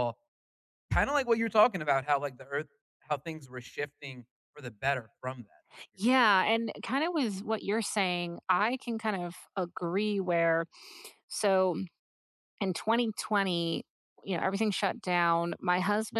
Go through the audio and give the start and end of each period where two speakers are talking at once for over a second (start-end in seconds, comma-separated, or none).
none